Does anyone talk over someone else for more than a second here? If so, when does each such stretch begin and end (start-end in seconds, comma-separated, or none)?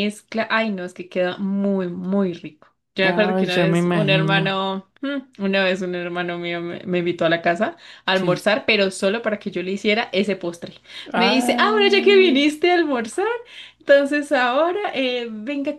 3.0-4.6, 11.2-12.4